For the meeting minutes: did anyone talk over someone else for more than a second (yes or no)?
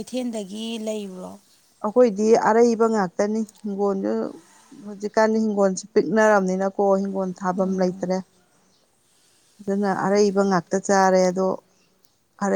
no